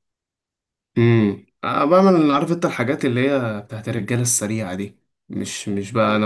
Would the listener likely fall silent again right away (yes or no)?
yes